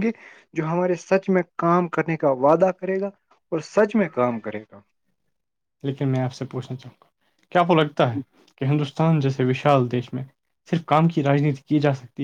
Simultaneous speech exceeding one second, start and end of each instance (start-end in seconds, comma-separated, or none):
none